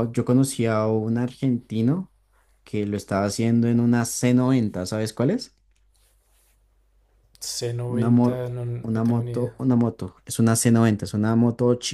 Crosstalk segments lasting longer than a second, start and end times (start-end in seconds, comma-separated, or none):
7.9-9.6